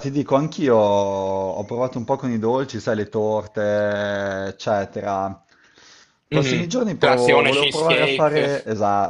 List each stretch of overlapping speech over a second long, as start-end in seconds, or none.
6.3-8.5